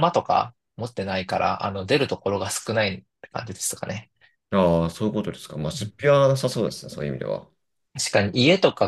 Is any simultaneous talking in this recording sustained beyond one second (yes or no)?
no